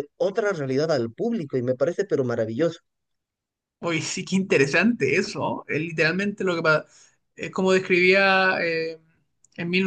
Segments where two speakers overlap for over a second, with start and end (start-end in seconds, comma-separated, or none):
none